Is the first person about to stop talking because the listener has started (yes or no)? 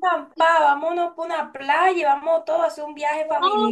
yes